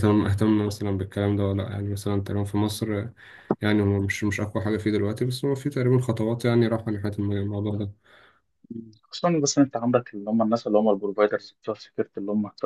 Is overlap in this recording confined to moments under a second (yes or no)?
yes